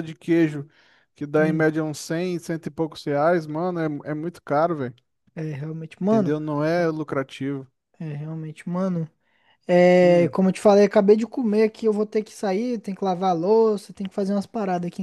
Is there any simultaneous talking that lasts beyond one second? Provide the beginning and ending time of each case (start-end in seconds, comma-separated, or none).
none